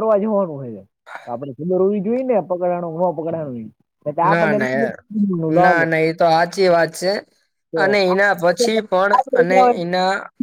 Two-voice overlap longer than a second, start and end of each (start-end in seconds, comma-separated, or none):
7.8-9.7